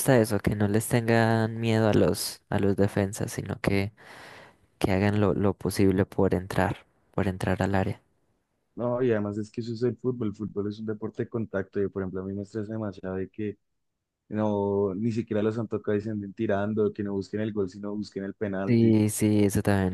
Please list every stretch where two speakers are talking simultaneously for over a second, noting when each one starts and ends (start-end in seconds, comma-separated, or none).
none